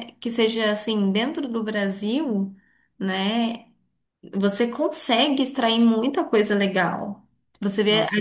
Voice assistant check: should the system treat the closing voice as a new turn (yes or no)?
no